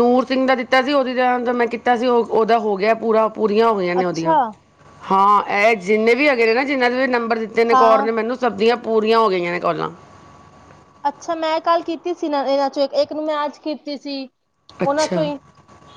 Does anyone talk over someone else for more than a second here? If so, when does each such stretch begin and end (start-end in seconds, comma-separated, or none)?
none